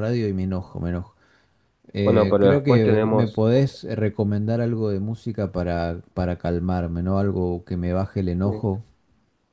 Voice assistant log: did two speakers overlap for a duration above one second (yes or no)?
yes